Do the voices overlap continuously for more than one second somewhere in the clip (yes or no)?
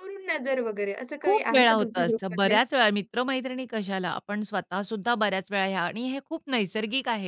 yes